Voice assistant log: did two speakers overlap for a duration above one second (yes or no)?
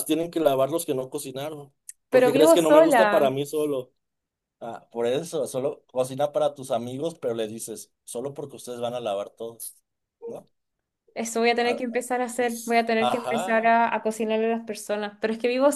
yes